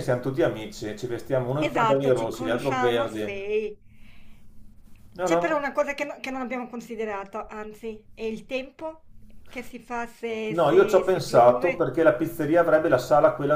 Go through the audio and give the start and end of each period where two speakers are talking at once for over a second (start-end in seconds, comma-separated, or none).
1.6-3.4, 10.4-11.9